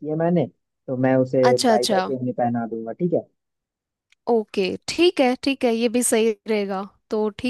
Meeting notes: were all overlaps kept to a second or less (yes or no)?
yes